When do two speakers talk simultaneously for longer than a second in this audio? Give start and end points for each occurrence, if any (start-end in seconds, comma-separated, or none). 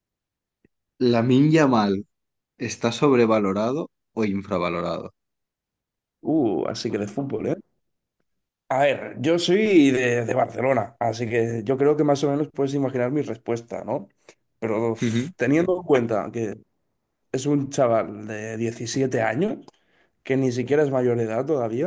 none